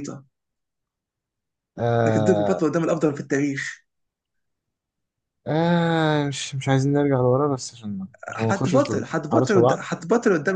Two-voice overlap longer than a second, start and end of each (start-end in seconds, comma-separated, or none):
8.5-9.8